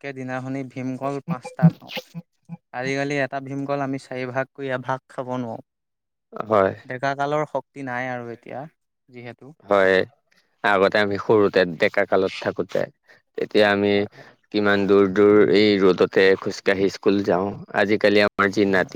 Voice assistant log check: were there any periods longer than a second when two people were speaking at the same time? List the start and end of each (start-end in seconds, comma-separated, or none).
none